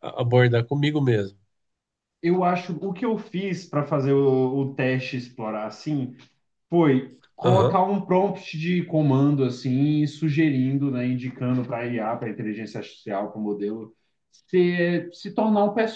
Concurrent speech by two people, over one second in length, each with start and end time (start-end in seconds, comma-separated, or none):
none